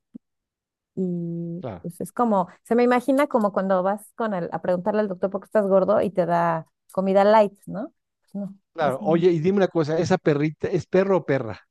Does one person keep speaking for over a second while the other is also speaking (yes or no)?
no